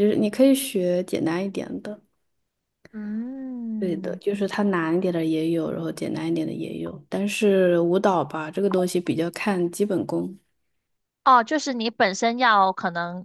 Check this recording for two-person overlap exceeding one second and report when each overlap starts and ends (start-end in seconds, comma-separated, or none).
none